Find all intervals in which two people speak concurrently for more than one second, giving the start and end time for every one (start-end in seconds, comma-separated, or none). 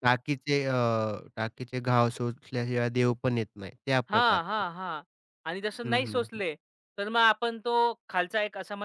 none